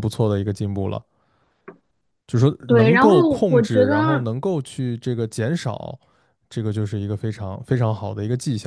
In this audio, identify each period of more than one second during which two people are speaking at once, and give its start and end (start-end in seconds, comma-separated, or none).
2.7-4.3